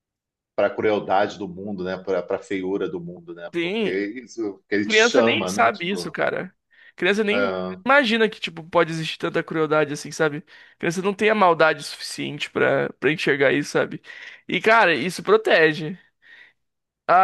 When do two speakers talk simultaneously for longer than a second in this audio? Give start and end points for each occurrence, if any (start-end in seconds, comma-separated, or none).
4.8-6.2